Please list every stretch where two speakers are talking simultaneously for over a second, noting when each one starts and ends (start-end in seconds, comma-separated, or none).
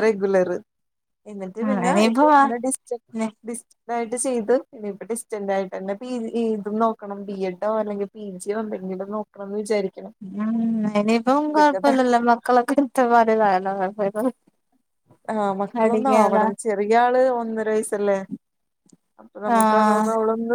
none